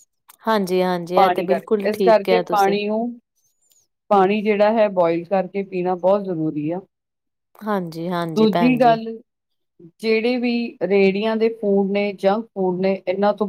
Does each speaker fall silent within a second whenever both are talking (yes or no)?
no